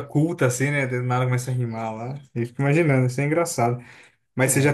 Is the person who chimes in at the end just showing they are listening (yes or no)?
yes